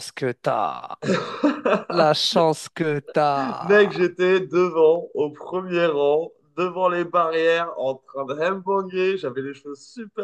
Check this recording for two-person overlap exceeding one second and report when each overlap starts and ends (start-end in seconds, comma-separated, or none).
none